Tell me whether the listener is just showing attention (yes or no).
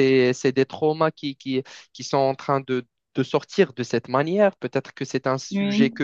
yes